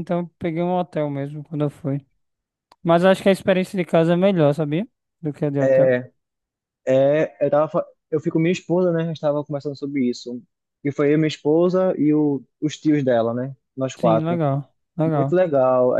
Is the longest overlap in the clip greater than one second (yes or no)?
no